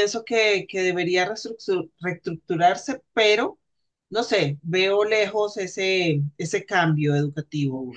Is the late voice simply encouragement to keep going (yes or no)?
no